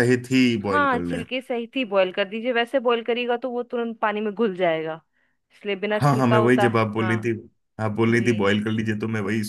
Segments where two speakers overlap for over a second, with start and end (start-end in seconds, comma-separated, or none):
6.0-7.3